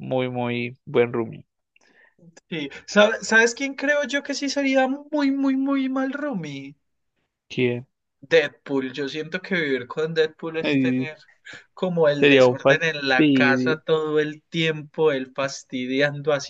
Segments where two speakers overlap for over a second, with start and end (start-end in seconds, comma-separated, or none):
12.2-13.8